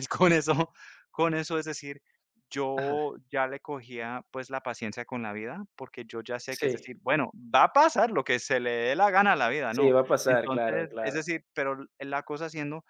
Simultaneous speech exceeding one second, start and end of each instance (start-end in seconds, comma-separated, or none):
9.8-11.2